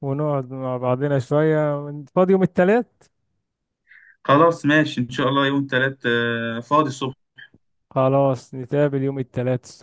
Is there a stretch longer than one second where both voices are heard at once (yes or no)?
no